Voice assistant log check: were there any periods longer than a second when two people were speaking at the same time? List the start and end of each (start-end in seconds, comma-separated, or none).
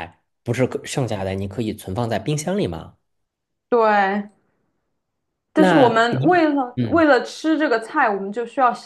5.5-7.0